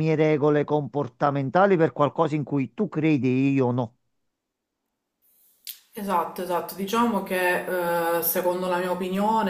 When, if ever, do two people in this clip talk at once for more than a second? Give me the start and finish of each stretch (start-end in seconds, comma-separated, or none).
none